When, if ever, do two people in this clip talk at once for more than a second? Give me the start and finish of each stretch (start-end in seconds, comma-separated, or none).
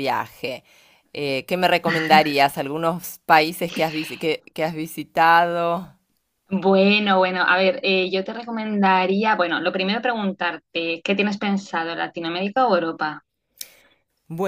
none